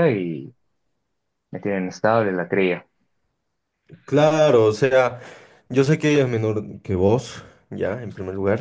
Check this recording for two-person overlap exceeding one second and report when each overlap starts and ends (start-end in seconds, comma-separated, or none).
none